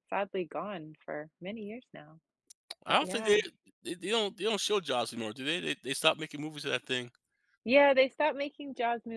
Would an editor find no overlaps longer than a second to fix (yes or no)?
yes